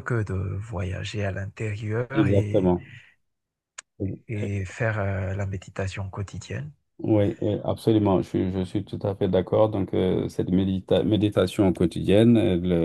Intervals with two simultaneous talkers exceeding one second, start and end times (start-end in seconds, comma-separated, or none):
none